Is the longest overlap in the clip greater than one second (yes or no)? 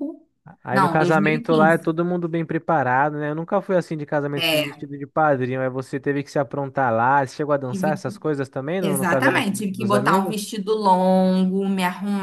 yes